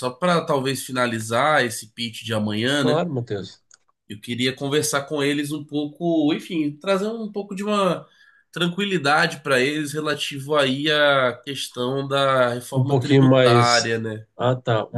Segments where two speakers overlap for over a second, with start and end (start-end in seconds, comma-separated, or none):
12.7-14.0